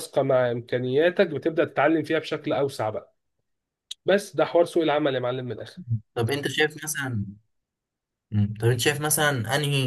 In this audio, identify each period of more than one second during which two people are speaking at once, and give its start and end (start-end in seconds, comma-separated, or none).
none